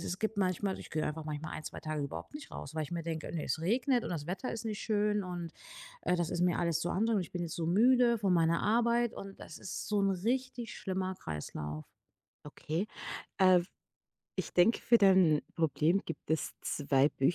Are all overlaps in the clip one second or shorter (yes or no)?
yes